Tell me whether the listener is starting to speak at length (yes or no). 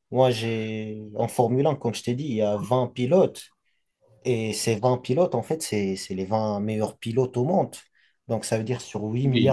no